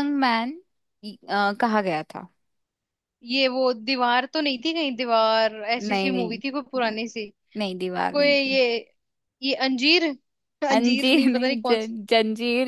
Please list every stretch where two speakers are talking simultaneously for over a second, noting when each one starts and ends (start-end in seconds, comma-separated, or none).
10.7-11.9